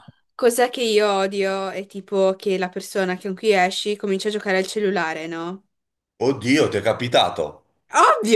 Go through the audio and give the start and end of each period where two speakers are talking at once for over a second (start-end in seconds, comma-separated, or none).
none